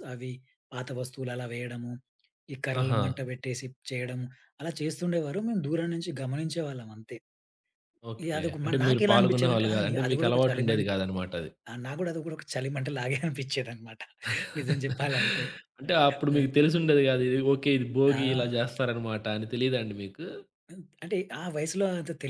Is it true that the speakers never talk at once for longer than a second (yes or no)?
no